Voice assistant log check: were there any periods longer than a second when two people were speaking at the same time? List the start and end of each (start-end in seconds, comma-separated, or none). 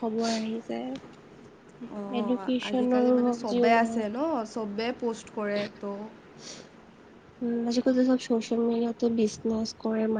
2.2-4.0